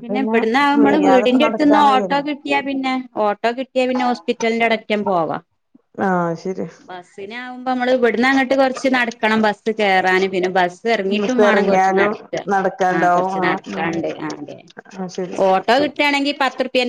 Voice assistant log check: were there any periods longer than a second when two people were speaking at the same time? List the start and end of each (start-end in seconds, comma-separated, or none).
0.8-2.2